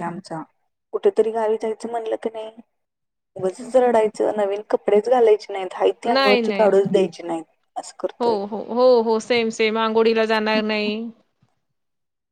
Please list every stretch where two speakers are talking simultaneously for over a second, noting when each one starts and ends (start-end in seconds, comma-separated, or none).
none